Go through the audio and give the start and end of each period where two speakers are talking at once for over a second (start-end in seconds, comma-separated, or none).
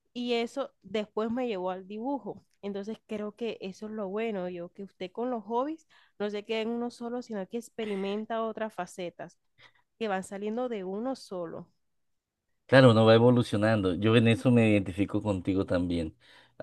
none